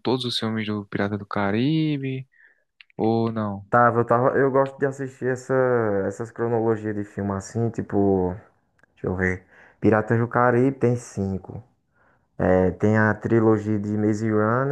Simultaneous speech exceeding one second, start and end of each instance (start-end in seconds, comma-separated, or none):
none